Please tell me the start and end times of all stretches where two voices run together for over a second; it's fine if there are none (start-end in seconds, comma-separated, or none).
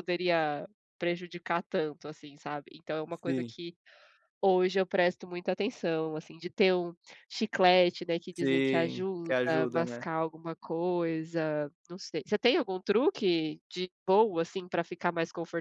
8.3-10.1